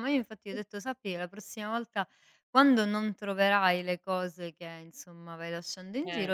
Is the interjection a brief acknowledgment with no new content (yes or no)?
yes